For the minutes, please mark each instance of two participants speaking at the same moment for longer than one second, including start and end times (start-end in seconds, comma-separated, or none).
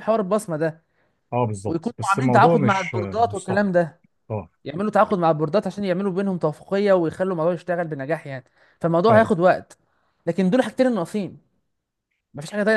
1.7-3.7